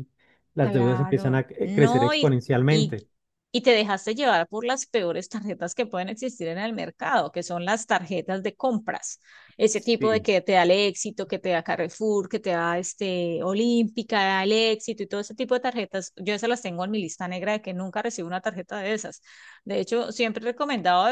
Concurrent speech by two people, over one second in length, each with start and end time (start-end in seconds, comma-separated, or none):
0.6-2.9